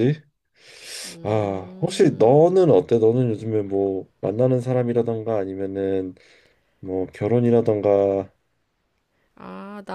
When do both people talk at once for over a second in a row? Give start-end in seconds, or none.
1.2-2.4